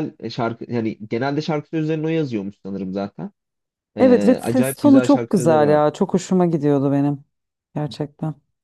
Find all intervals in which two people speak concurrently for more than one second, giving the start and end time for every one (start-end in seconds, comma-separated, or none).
4.0-5.8